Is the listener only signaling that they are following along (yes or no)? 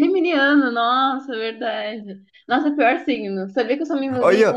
no